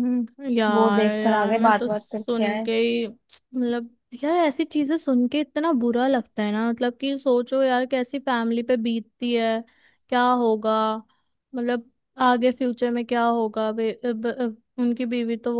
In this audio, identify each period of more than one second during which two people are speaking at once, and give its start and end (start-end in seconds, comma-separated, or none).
0.7-2.7